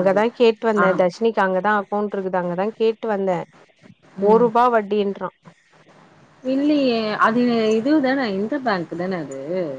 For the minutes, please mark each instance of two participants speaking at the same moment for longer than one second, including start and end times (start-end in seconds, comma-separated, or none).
none